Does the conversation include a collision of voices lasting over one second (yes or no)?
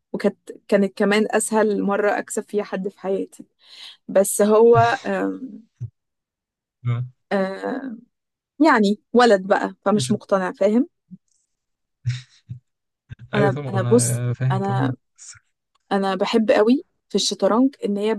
yes